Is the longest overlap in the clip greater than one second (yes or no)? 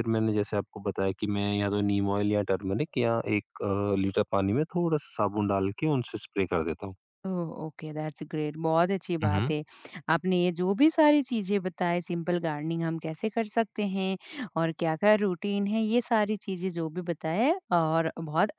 no